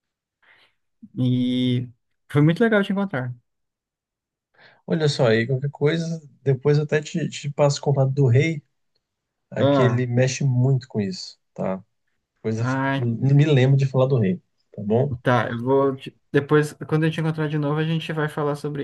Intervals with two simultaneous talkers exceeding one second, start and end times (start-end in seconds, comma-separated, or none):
none